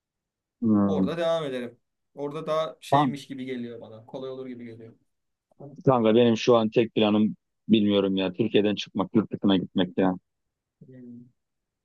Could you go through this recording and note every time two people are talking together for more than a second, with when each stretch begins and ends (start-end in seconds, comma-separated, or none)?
none